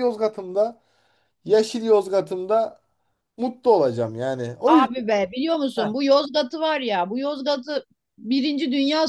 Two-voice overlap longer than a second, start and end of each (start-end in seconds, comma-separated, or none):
none